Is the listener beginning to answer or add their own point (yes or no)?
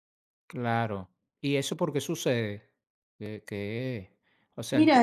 yes